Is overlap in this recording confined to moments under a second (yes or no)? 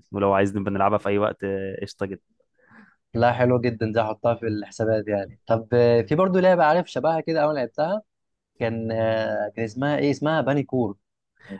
yes